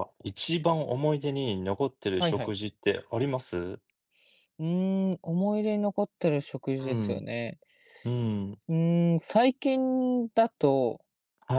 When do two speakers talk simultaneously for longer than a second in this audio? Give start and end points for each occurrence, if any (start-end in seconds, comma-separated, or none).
none